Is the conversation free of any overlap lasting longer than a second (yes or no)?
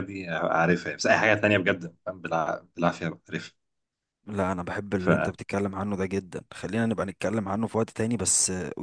yes